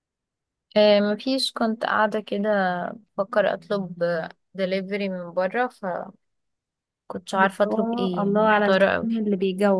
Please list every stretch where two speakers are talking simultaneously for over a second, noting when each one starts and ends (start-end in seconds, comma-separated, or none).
7.4-9.1